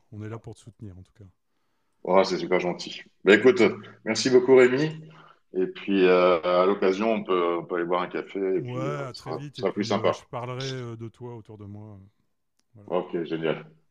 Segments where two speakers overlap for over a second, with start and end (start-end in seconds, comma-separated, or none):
8.6-10.2